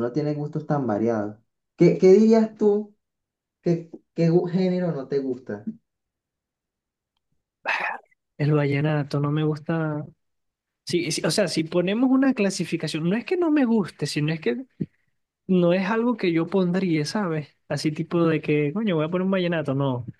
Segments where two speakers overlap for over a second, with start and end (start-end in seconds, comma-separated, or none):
none